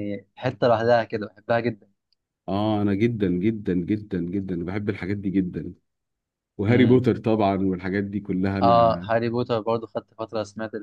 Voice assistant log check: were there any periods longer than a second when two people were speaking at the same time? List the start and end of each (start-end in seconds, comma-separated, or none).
none